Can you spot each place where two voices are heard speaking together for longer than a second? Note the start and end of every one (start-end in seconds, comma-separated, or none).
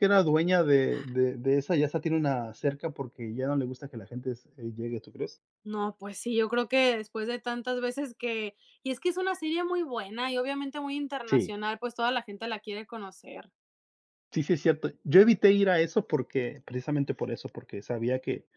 none